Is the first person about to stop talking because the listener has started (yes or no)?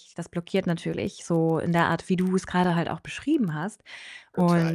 no